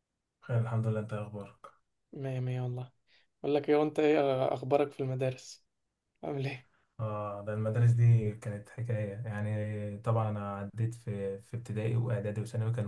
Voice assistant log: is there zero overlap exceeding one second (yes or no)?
yes